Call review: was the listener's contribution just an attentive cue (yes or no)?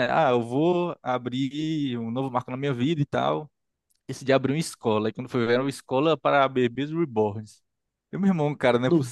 yes